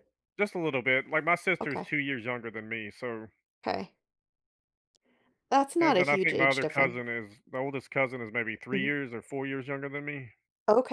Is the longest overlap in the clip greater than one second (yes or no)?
yes